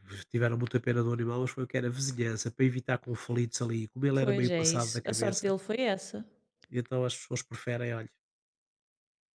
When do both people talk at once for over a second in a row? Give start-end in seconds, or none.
4.2-5.5